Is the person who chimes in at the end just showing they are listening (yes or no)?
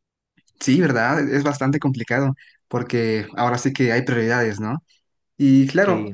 yes